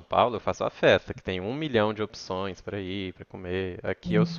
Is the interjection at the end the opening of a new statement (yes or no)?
no